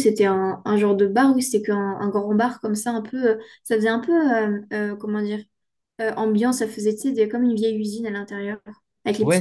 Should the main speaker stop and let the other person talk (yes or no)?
yes